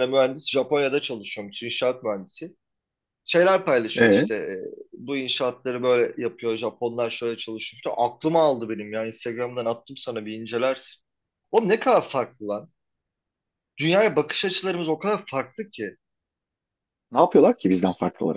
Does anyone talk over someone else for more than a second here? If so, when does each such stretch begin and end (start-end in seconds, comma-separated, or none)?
none